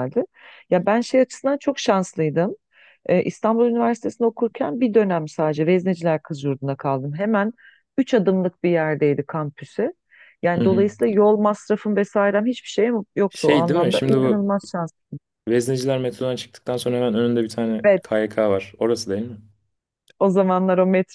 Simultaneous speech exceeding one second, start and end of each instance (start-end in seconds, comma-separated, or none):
13.3-14.5